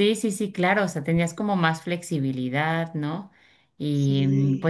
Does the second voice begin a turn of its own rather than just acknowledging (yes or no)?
no